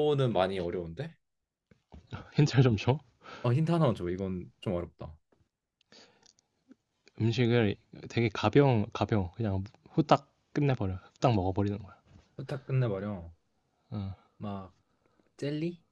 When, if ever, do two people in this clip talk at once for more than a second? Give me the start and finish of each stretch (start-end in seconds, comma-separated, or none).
none